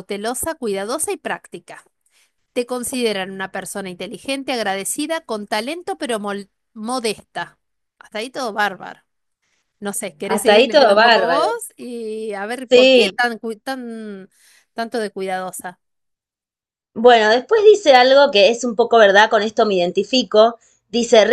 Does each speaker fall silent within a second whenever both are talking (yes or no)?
no